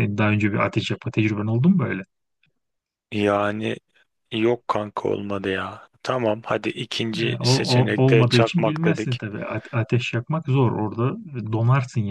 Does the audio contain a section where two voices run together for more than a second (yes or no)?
yes